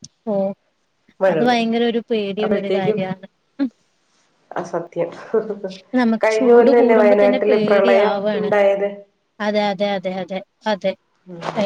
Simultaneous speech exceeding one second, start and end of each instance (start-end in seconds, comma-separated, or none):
6.2-8.5